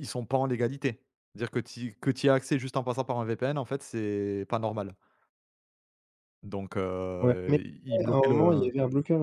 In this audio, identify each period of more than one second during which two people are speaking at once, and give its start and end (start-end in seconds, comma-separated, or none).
7.2-8.7